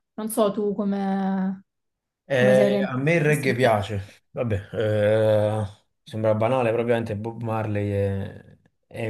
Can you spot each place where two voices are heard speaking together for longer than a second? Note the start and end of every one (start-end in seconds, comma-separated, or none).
2.3-3.8